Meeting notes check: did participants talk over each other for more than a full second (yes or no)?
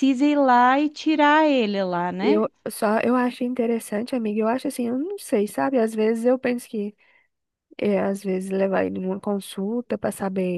no